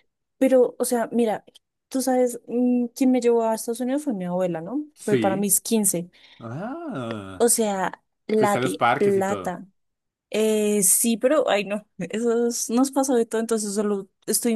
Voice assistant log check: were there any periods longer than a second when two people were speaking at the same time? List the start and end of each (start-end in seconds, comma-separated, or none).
8.3-9.6